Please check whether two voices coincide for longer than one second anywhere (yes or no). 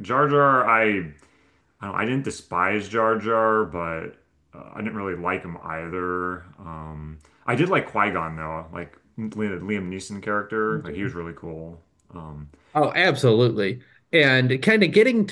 no